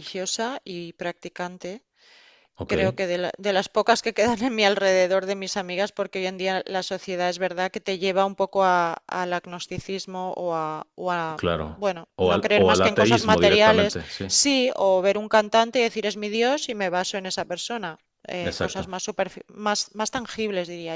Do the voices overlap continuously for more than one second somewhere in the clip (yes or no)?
yes